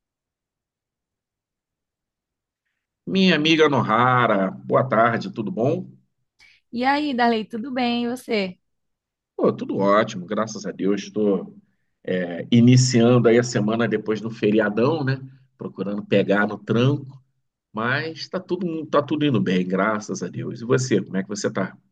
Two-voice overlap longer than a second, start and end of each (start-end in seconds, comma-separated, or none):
none